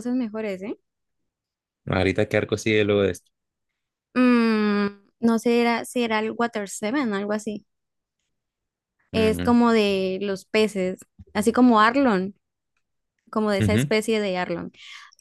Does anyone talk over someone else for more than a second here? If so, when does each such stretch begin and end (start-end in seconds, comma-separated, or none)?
none